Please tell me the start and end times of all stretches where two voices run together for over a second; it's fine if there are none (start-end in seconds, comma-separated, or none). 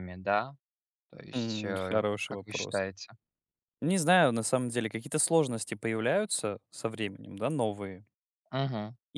1.3-2.9